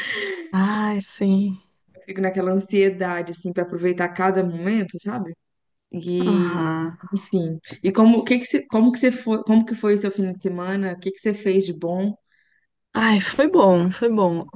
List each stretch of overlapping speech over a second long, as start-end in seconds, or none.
none